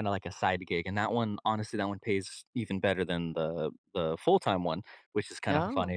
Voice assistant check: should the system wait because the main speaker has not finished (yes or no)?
yes